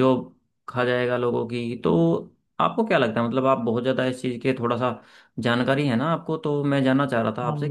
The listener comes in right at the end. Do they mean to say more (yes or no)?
no